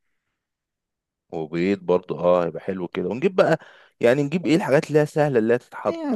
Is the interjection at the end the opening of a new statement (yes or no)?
yes